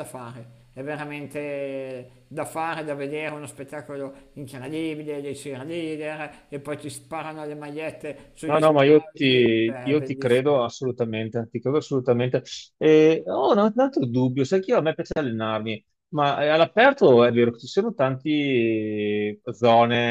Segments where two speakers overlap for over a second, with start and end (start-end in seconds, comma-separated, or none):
8.4-10.5